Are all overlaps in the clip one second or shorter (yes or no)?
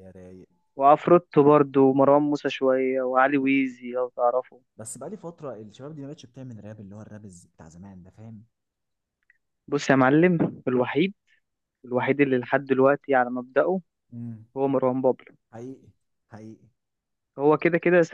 yes